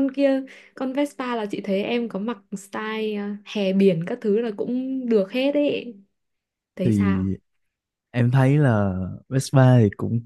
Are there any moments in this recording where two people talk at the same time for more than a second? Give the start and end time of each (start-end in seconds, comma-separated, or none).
none